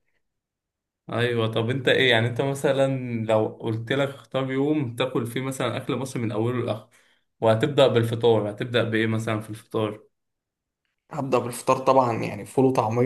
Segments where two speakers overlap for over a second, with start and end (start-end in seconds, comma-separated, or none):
none